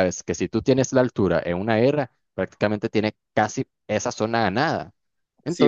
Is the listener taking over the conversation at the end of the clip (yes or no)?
yes